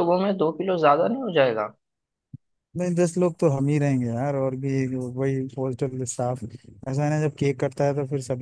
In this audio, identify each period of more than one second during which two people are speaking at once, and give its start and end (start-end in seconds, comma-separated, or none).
none